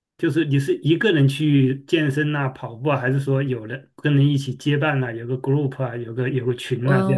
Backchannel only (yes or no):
no